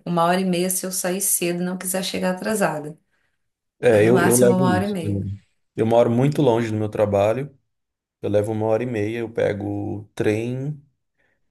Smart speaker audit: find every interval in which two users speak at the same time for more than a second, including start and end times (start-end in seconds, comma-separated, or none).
3.9-5.2